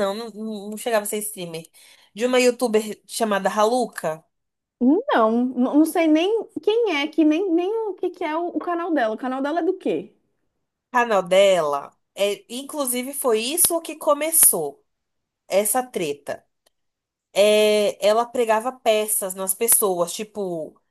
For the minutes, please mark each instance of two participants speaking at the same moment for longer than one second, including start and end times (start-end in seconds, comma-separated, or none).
none